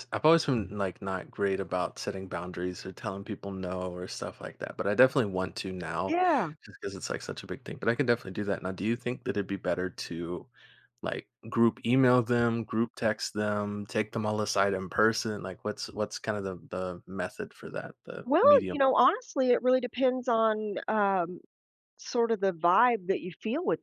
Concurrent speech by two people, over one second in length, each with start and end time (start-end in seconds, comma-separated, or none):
none